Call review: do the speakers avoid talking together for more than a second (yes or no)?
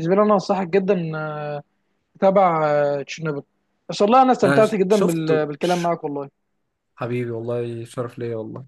no